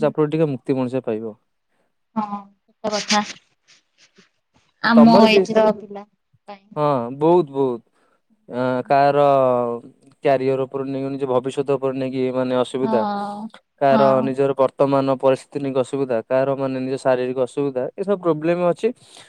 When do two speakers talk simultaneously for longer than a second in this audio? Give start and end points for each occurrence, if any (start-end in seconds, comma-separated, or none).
none